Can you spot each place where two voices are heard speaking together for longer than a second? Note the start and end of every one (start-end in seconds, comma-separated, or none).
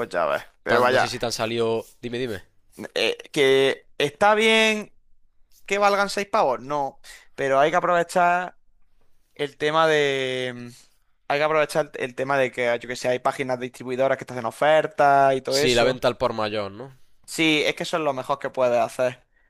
none